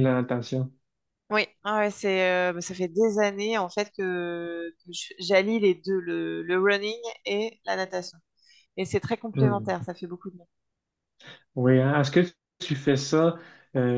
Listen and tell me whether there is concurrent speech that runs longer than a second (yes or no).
no